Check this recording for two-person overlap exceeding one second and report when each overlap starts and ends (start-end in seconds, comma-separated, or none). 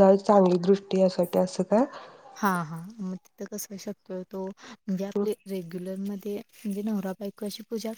none